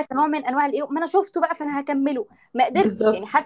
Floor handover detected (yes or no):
no